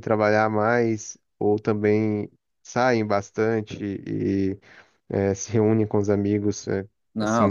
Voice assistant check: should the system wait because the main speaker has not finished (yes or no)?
no